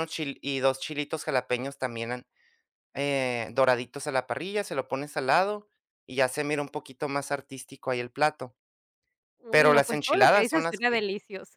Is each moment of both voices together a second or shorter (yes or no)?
no